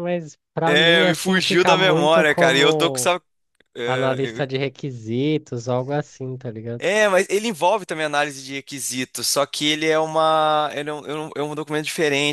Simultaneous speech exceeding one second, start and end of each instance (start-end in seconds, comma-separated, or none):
0.7-3.1